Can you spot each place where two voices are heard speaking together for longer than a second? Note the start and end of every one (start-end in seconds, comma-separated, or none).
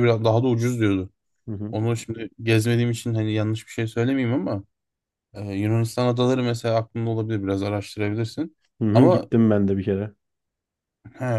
none